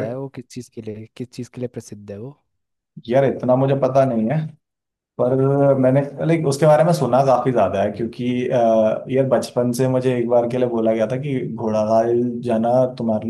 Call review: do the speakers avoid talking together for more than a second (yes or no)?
yes